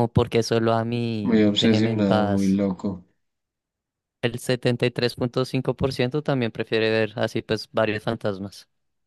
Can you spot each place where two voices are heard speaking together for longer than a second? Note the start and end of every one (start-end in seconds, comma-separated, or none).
1.2-2.6